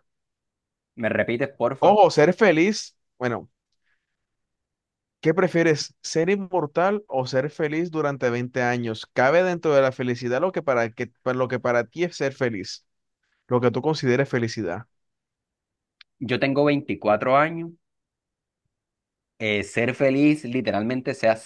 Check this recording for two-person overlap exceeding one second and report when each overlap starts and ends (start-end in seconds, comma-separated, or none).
none